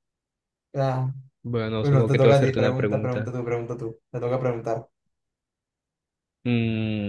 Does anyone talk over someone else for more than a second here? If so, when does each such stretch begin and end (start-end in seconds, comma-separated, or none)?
1.8-3.3